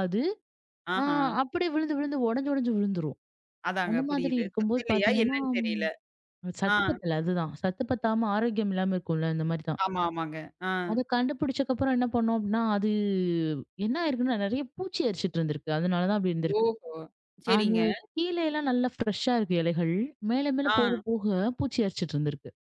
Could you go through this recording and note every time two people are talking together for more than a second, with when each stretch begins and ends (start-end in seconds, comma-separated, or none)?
3.9-5.8